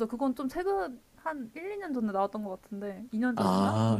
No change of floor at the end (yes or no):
no